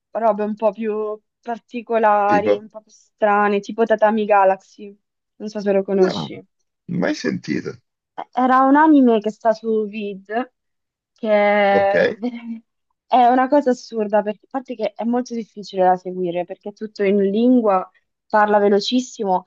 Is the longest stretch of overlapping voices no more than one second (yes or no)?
yes